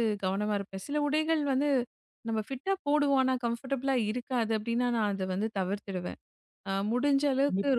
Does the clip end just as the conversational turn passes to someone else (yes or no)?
no